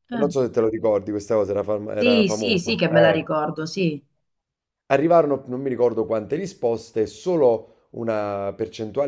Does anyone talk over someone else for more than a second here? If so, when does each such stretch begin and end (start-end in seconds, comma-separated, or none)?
1.9-3.3